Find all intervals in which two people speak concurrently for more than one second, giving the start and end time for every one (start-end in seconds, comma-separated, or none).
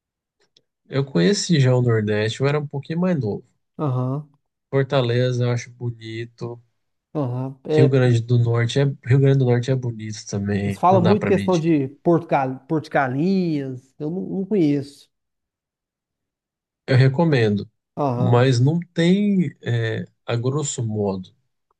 10.6-11.8